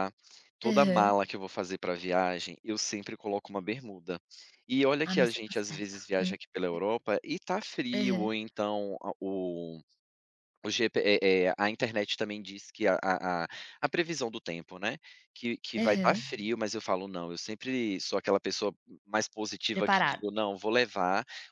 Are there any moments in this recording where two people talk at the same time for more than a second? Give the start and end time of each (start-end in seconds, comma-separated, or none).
5.0-6.4